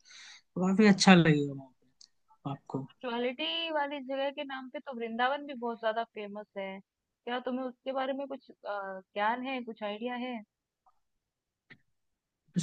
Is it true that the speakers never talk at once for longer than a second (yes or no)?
yes